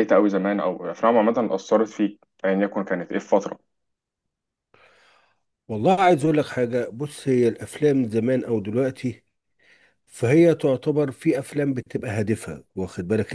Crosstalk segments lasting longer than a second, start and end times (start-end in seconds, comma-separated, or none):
none